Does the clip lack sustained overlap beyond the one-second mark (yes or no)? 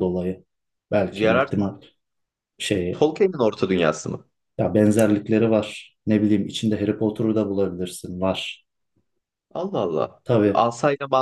yes